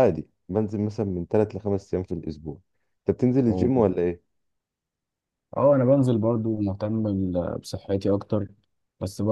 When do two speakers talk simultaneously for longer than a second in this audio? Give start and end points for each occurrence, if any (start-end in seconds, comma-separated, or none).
none